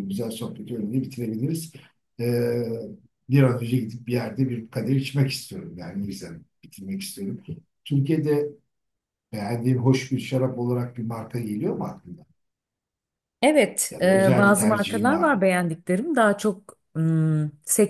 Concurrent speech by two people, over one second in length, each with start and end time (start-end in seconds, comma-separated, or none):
13.9-15.4